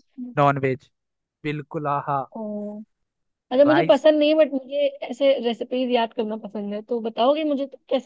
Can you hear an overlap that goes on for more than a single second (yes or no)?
no